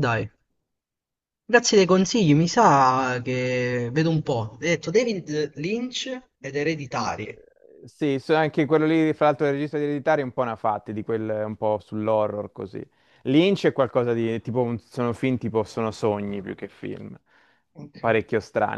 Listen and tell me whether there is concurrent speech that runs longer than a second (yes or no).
no